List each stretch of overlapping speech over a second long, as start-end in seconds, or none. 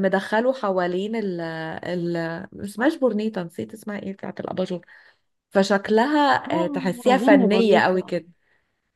6.5-8.2